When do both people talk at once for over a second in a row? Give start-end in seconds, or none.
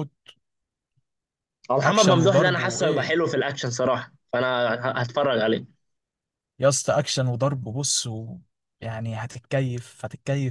1.8-3.2